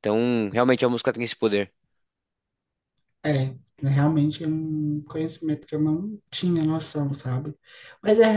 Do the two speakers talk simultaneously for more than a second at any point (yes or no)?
no